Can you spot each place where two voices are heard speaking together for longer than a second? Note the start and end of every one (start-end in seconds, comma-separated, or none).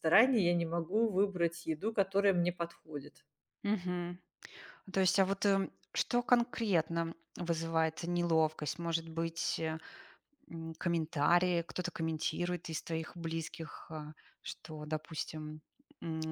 none